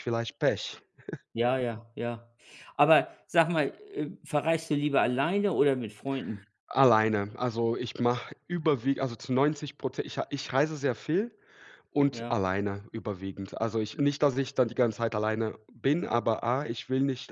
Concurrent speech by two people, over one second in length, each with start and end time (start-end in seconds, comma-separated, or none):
none